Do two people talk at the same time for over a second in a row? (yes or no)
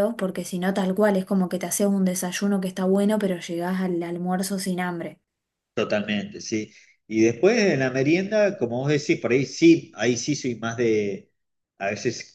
no